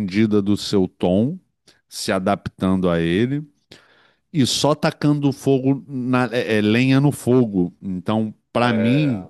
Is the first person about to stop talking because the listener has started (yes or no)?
no